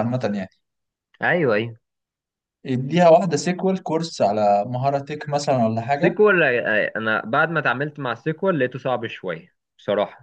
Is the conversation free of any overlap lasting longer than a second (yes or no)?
yes